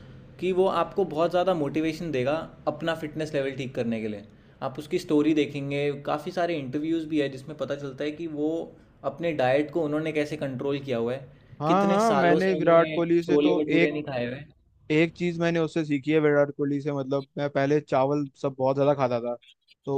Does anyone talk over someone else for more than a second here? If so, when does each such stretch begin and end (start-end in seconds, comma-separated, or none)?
11.7-13.9